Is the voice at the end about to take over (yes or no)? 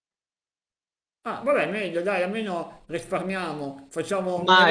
yes